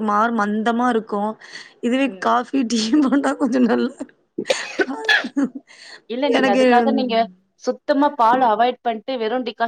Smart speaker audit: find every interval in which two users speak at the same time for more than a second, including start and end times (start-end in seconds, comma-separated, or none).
none